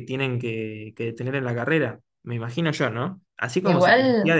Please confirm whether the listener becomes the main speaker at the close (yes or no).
no